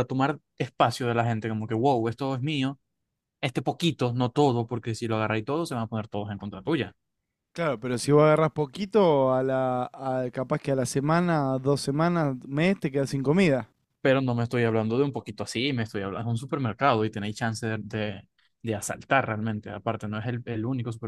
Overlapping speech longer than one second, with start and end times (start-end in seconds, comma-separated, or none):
none